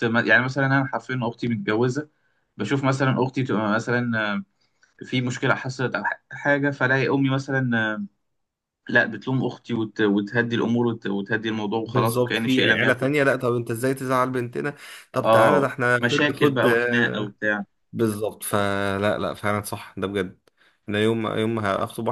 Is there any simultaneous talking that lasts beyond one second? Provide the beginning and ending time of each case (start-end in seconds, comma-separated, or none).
11.8-13.1, 15.2-17.3